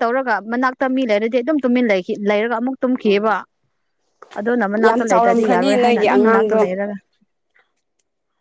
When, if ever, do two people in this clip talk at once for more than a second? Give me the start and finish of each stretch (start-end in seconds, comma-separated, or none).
4.9-6.6